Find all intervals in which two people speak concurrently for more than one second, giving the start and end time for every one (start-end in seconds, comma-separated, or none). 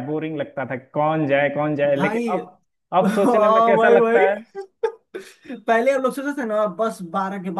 3.0-4.3